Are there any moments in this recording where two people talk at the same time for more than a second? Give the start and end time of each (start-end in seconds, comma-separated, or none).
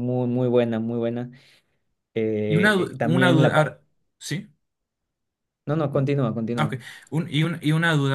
2.5-3.7